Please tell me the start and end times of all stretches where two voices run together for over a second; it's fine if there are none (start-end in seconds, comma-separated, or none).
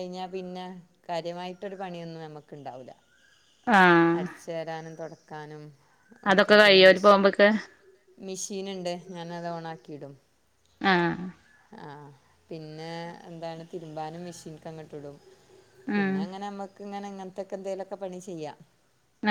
none